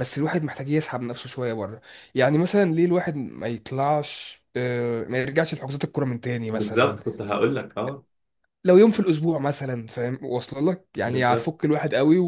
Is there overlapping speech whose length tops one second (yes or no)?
no